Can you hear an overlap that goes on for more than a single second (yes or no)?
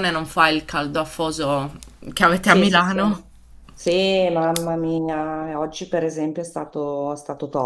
no